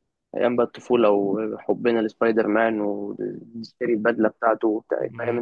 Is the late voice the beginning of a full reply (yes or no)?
yes